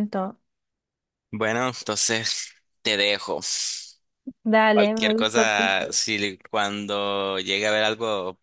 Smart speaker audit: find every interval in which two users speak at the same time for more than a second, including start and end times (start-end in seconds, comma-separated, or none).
4.7-6.0